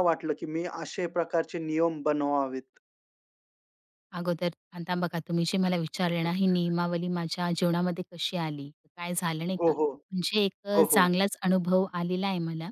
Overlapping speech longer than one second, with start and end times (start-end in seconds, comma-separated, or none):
none